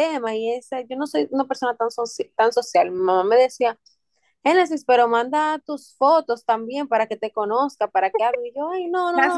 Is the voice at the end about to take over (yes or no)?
yes